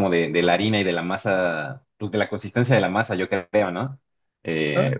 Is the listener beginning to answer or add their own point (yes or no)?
no